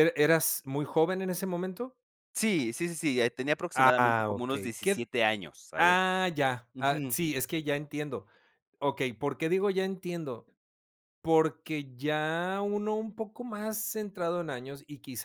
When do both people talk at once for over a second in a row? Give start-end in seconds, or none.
3.7-5.1